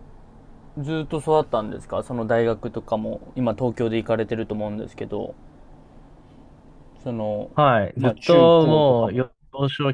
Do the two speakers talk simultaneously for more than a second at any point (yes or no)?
yes